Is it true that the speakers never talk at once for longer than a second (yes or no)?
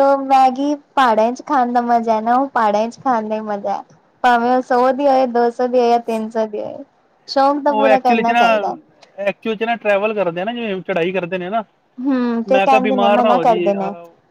no